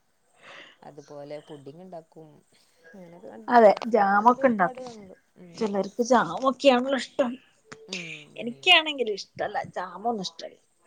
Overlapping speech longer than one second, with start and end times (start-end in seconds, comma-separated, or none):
3.5-4.9